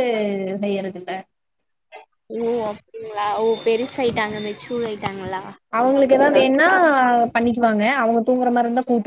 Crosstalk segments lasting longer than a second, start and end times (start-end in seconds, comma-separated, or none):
none